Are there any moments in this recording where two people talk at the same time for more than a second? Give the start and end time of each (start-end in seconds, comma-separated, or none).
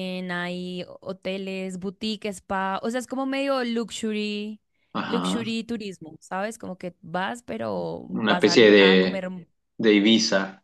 8.1-9.3